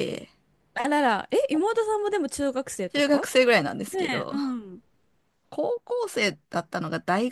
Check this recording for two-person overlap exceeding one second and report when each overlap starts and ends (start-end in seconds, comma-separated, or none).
none